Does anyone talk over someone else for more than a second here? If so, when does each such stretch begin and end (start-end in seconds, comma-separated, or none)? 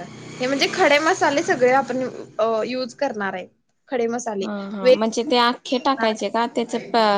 none